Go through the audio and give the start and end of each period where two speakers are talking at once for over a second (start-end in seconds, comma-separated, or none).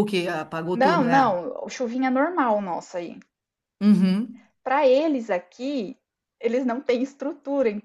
none